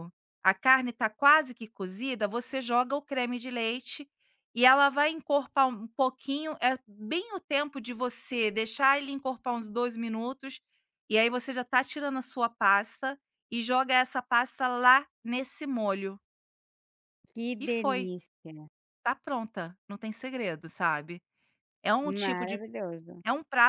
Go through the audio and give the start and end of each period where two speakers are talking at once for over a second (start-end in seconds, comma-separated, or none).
none